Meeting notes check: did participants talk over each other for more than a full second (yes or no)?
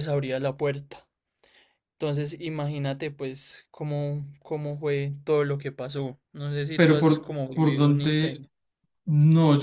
yes